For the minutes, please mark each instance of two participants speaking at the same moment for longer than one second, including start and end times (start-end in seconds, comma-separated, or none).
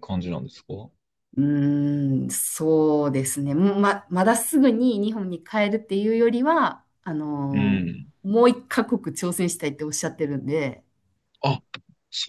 none